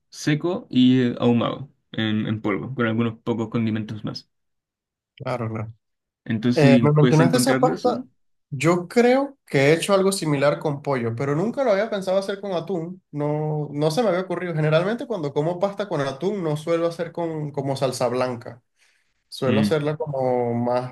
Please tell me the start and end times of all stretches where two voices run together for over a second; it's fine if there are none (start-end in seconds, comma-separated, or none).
6.5-8.0